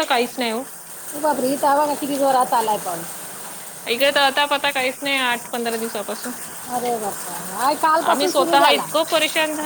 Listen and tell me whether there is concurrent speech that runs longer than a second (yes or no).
no